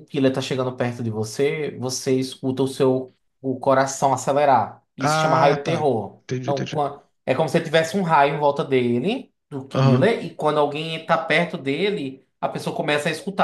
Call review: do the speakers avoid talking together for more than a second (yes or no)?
no